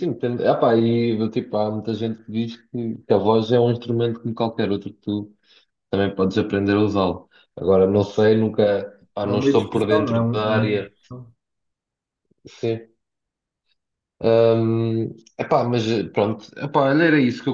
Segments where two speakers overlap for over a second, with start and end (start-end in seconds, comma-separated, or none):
9.2-10.9